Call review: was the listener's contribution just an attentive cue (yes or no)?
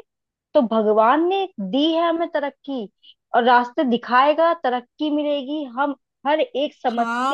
no